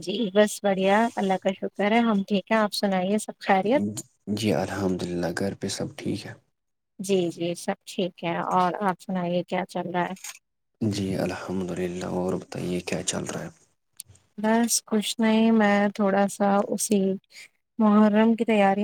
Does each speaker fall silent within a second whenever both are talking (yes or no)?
yes